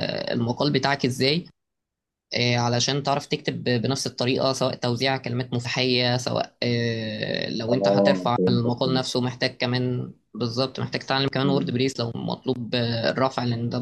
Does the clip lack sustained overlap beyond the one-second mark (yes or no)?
no